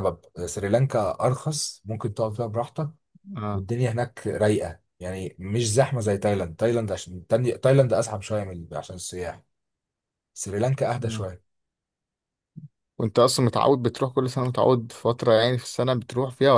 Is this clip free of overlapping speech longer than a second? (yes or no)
yes